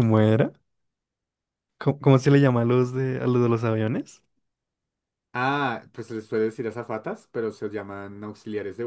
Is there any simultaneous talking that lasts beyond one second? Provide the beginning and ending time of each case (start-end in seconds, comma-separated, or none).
none